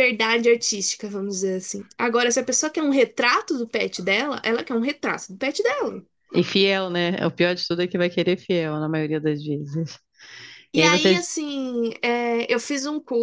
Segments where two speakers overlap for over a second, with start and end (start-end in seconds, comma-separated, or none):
none